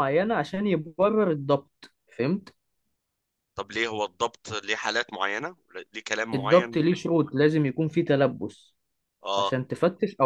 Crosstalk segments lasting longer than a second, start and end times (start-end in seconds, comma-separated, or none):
none